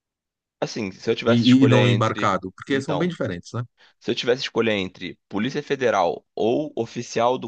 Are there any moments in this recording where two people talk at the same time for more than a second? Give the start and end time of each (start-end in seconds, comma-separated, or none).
1.2-3.1